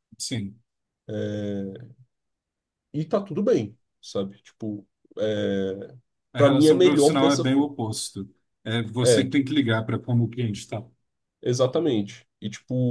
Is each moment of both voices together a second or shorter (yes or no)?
no